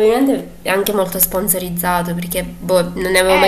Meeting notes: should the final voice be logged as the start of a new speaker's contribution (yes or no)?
yes